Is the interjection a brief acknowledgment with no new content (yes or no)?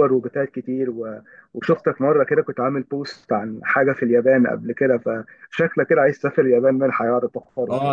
no